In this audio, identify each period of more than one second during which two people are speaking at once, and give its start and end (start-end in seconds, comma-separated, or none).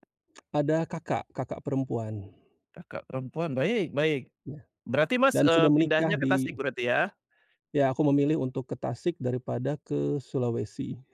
5.3-6.5